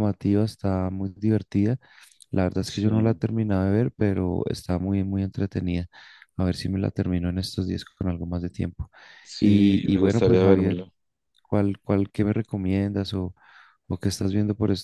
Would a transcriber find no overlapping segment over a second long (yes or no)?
no